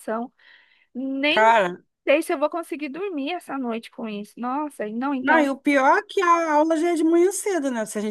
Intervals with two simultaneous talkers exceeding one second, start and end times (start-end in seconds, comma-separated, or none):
none